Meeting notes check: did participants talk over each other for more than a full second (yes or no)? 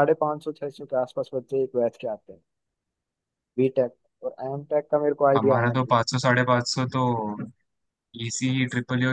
no